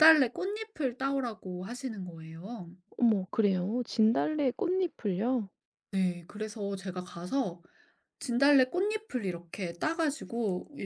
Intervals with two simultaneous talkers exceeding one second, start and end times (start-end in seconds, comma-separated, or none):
none